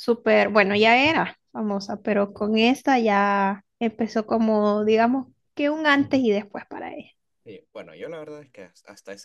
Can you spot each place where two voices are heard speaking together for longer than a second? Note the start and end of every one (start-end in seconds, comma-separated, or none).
none